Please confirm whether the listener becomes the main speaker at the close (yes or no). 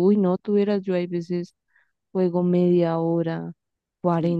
no